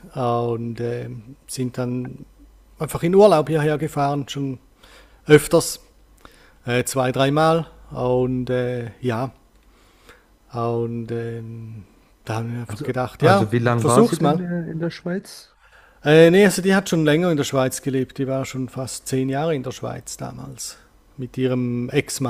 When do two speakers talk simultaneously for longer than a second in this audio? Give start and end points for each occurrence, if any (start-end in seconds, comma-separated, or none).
12.7-14.4